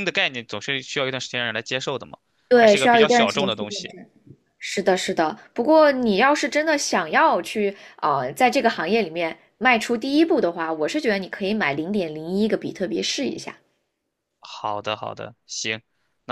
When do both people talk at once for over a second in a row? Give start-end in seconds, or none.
2.6-3.9